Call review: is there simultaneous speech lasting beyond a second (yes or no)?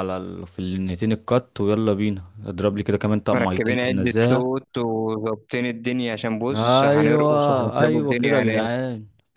yes